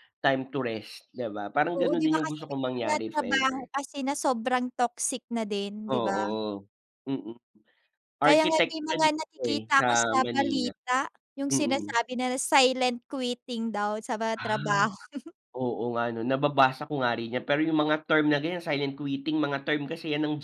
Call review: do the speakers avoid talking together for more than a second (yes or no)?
no